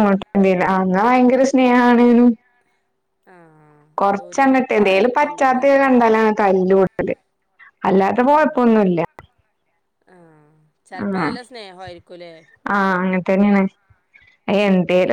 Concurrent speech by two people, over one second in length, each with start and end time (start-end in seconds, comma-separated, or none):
4.0-5.8